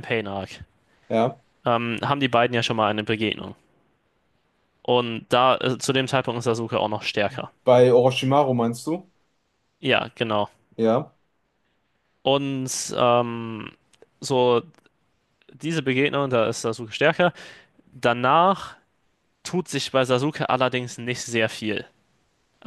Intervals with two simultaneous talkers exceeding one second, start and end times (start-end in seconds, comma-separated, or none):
none